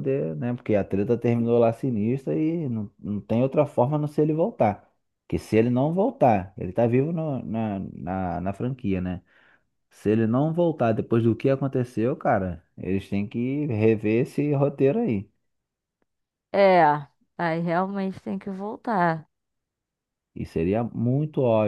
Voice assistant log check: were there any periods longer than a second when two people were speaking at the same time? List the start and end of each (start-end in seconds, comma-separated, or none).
none